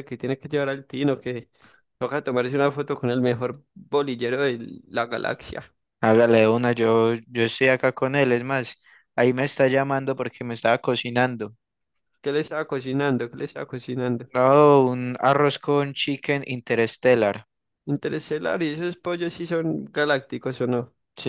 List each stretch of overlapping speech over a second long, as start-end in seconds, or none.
none